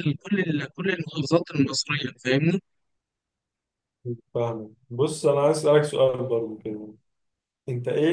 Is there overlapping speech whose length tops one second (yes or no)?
no